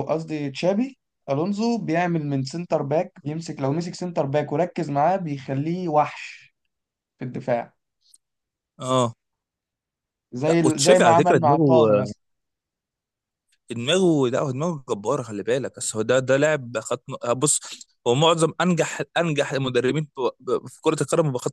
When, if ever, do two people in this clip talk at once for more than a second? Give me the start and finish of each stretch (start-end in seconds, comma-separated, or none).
10.5-12.1